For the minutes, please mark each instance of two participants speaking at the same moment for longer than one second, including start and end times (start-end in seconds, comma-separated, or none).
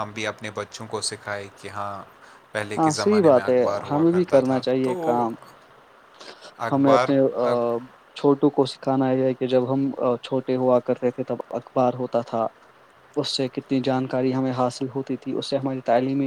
2.8-5.2